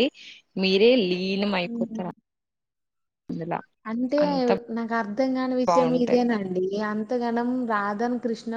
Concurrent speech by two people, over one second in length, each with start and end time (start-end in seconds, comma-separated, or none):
none